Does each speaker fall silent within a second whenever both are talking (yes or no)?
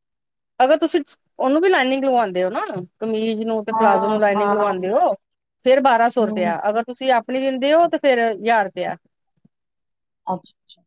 no